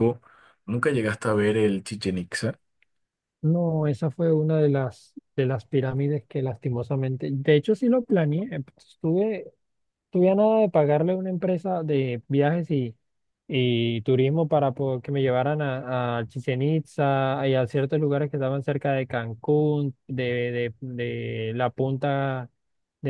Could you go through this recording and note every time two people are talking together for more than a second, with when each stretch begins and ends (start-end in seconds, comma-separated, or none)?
none